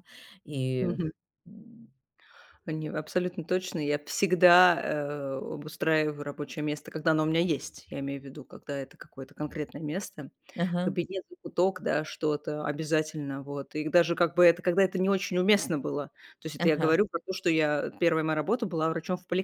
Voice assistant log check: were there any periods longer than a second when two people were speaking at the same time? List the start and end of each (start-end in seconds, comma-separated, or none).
none